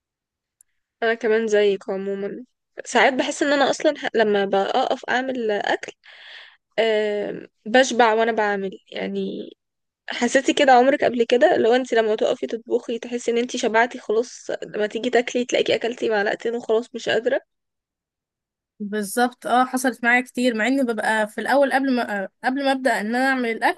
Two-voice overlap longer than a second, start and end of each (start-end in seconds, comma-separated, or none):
none